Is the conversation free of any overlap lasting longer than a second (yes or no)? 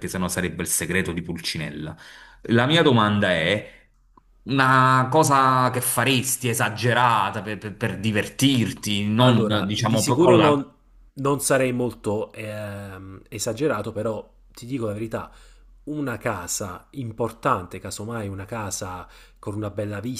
no